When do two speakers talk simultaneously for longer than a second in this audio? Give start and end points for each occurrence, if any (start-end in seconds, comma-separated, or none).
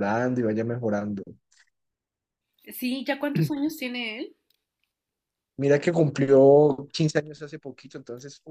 none